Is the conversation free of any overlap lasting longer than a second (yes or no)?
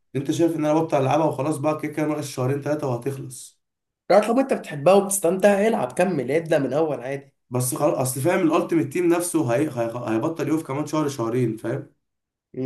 yes